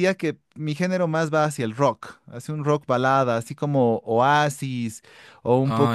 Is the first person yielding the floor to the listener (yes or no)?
no